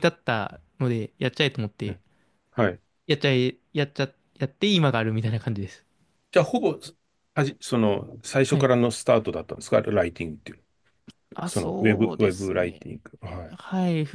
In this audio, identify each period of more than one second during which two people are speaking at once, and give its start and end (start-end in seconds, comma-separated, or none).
11.4-12.8